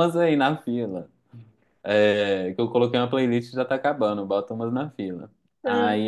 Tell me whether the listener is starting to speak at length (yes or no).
no